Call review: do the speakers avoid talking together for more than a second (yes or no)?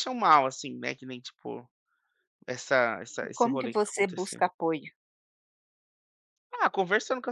no